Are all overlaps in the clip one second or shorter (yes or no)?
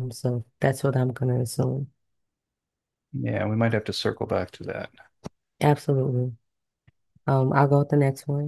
yes